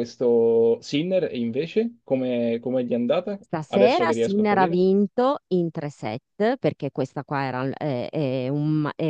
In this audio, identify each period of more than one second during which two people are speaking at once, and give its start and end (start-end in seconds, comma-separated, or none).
3.4-4.8